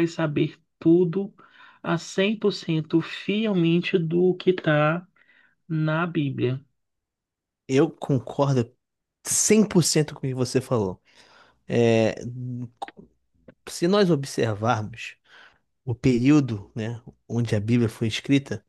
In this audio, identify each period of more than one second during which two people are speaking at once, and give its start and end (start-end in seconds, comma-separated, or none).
none